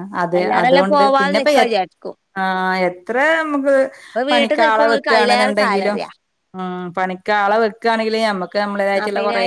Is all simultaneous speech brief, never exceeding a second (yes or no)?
no